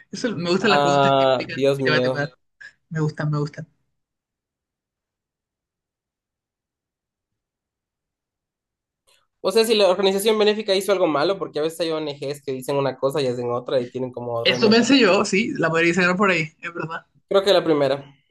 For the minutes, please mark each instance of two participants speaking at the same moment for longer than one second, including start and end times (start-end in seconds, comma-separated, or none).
0.6-2.3